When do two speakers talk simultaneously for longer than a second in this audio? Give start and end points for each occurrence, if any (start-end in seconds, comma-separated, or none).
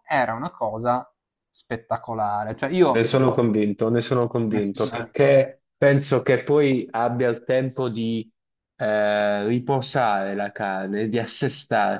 none